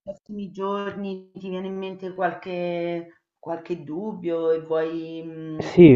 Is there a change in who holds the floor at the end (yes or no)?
yes